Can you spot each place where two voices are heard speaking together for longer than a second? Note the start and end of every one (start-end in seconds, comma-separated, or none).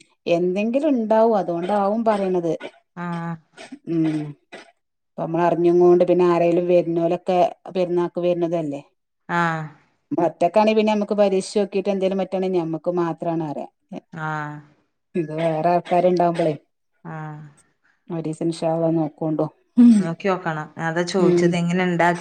none